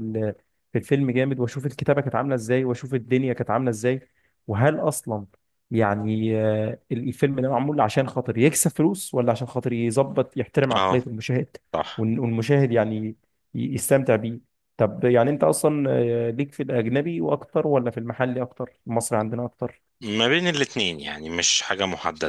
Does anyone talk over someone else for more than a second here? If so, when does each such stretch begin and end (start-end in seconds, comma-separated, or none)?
none